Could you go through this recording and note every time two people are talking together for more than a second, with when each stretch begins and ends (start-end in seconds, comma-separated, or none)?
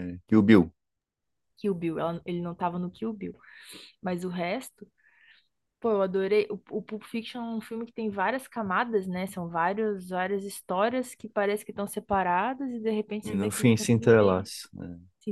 13.2-14.5